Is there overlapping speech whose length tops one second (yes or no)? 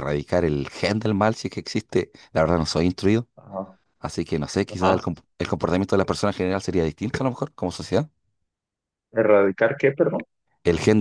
no